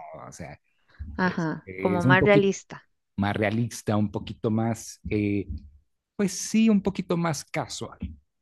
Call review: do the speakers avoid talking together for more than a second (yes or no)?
no